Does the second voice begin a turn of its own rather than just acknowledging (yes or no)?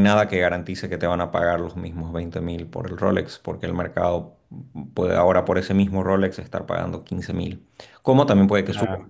no